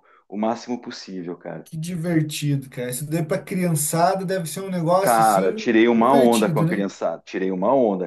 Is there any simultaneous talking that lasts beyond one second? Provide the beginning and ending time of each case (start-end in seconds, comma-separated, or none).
5.0-6.8